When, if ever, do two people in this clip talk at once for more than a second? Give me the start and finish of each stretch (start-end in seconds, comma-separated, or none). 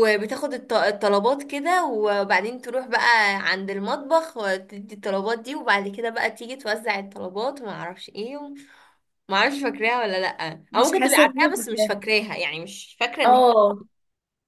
10.7-11.9